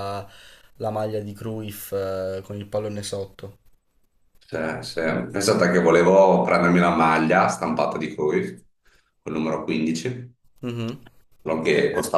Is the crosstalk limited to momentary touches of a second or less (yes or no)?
yes